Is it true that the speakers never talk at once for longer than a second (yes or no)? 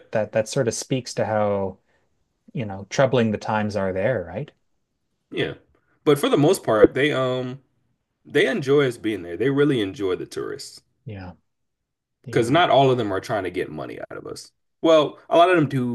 yes